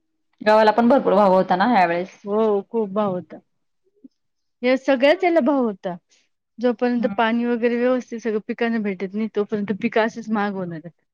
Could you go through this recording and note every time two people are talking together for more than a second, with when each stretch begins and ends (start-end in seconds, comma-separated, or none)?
none